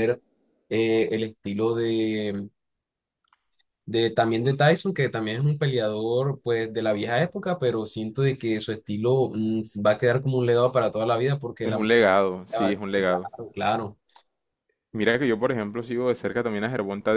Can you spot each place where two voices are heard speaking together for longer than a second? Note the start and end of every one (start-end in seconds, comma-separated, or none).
11.6-13.3